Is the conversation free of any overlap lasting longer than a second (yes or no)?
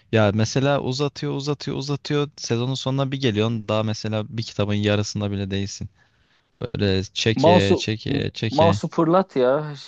no